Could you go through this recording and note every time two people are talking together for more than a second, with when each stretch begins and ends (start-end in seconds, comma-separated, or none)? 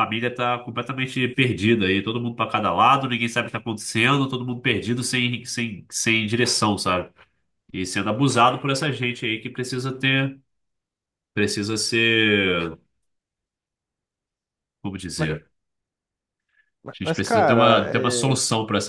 17.0-18.2